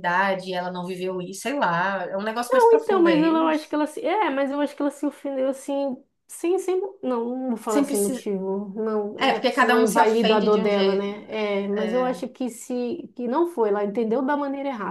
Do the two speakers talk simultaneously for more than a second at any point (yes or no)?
yes